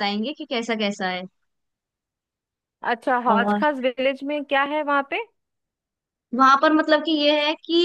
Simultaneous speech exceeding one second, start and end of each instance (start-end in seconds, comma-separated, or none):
none